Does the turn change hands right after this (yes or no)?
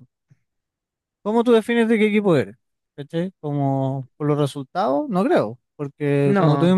no